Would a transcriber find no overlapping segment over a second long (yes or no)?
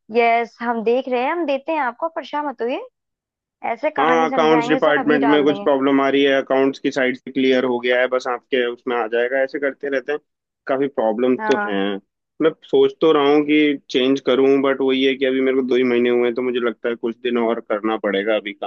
no